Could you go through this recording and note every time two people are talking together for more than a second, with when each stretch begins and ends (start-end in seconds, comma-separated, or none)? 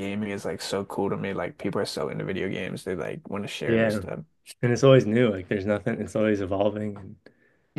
none